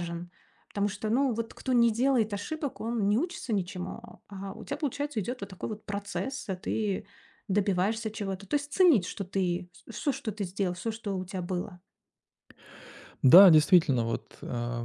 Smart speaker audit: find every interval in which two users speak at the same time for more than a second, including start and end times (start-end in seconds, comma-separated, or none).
none